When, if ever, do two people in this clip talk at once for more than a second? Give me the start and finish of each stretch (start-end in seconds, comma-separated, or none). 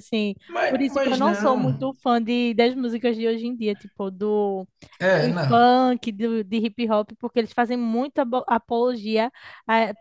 0.5-1.9